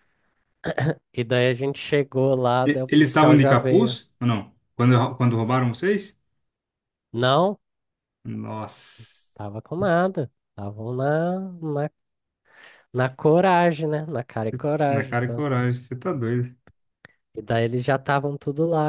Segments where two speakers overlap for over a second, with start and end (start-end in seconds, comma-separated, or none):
2.6-4.0